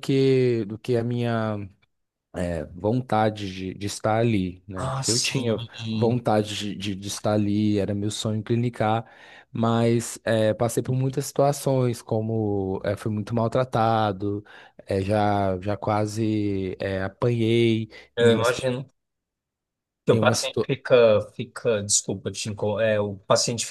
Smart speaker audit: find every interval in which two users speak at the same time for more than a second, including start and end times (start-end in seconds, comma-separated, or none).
4.8-6.2